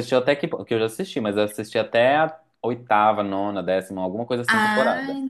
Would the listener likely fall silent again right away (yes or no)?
no